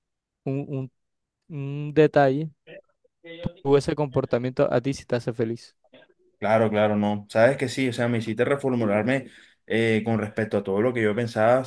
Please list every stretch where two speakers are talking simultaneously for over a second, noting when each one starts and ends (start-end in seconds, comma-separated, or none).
none